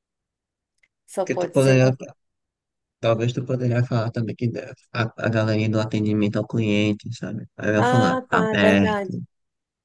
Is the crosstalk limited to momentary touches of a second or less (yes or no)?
no